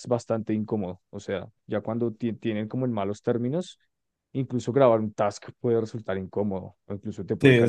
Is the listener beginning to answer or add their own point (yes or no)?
yes